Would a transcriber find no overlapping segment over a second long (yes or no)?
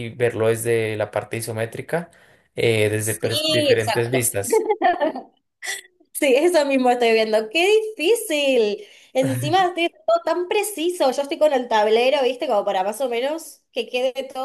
no